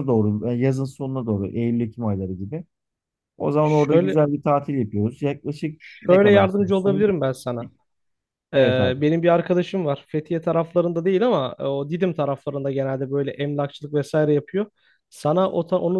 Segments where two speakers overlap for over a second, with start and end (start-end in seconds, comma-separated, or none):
5.8-7.1